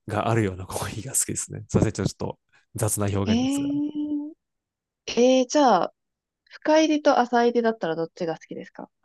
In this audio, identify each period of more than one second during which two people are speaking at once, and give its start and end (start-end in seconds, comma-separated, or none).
none